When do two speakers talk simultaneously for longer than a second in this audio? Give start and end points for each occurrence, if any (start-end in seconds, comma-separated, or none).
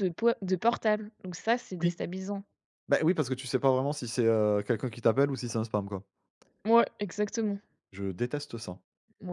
none